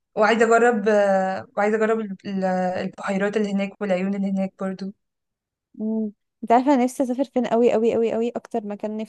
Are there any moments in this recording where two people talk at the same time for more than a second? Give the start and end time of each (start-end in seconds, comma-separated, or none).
none